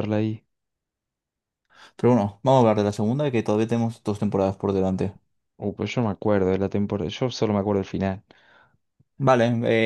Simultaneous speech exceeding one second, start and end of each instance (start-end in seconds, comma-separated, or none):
none